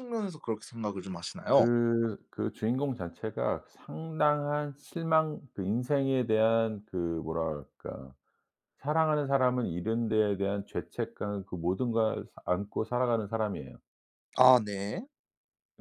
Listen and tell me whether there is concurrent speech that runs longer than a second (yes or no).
no